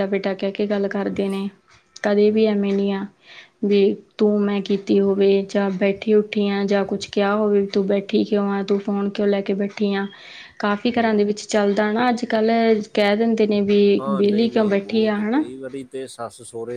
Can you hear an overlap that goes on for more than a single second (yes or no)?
yes